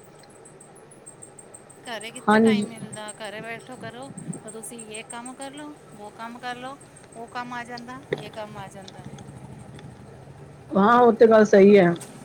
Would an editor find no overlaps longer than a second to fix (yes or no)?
yes